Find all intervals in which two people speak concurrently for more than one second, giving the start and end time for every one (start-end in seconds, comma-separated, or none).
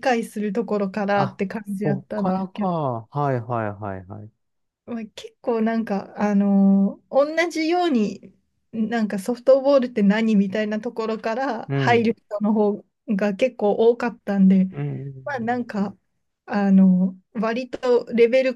1.1-2.7